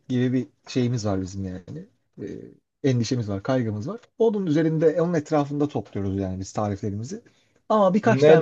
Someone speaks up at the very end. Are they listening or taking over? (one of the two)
taking over